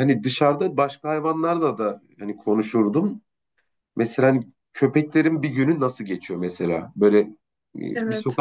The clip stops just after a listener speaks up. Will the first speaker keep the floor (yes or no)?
yes